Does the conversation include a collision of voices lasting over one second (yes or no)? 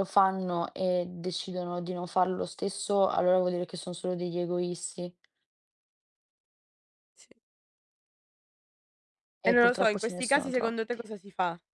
yes